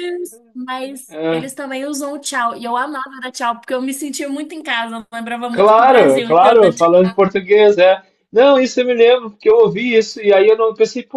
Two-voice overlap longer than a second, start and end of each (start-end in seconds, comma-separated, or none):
5.5-6.9